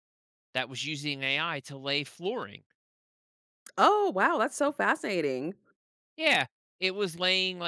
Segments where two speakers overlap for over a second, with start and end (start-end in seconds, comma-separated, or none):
none